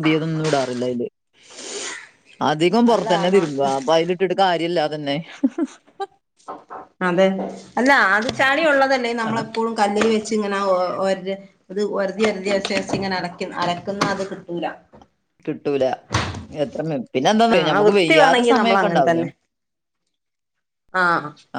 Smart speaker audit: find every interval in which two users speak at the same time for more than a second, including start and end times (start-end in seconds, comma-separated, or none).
17.6-19.2